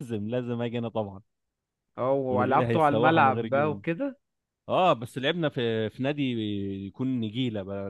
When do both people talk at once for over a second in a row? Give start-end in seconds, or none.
2.3-3.8